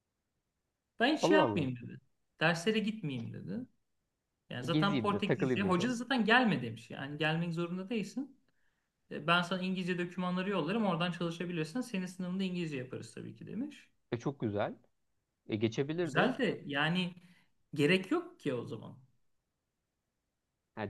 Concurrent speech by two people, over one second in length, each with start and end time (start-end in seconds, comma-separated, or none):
4.7-5.9